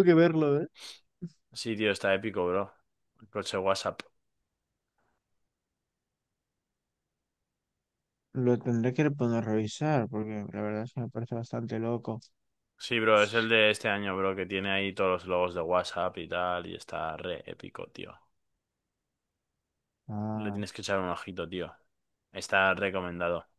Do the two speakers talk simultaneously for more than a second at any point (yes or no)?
no